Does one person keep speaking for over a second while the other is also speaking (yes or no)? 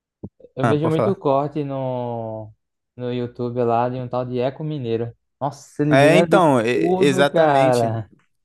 yes